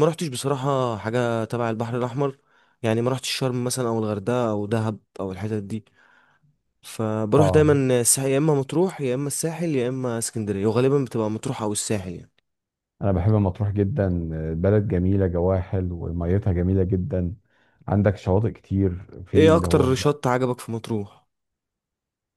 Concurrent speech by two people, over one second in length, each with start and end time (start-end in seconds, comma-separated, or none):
none